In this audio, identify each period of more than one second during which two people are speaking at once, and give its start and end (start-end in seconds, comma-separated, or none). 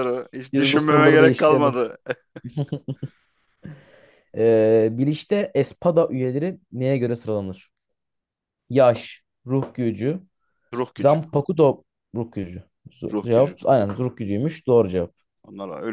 0.5-1.8